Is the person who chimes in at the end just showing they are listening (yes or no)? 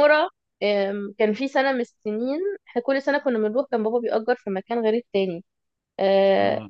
yes